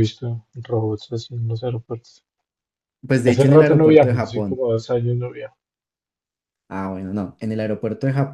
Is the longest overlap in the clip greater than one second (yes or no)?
yes